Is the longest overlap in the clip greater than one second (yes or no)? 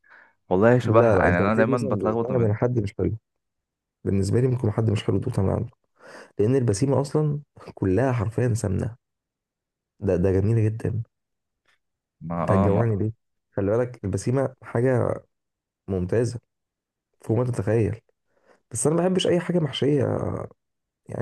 yes